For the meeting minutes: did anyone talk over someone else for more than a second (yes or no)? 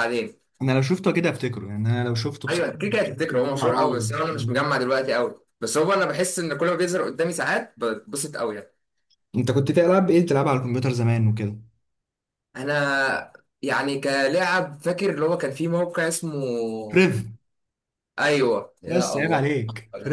yes